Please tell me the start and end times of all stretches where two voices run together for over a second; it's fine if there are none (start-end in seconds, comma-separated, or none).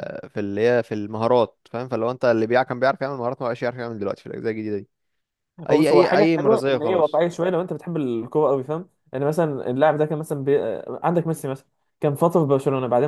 5.7-7.2